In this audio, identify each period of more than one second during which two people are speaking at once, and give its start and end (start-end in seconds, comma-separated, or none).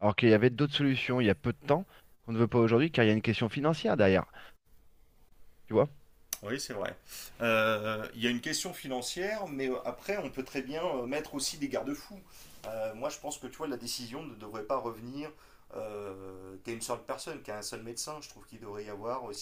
none